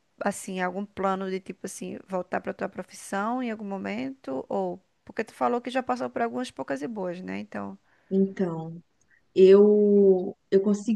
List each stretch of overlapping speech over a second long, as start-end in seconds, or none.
none